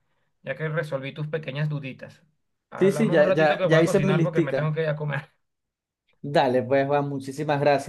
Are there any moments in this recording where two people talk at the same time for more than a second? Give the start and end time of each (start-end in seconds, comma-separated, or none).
2.8-4.8